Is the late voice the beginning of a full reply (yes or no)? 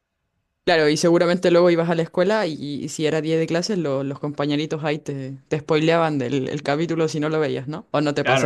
yes